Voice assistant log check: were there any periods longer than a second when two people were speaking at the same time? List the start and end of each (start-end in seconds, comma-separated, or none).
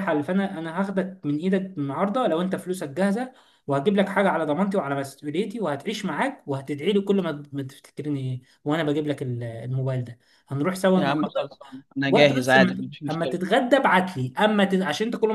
12.1-13.4